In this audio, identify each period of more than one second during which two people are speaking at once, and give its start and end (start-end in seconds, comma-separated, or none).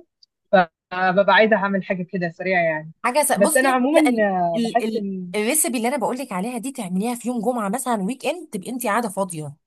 3.4-5.3